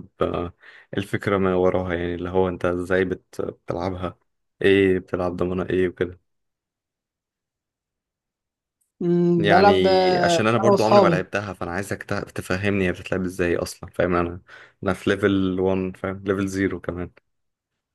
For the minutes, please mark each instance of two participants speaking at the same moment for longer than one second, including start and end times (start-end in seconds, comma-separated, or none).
9.4-11.2